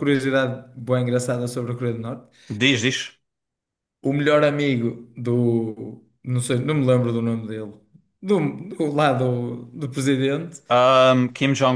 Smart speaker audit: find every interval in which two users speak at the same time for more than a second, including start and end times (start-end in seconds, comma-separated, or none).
none